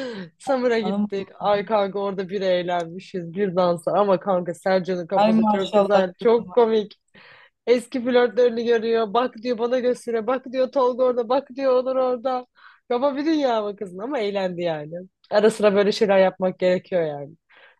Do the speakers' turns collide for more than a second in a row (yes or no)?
yes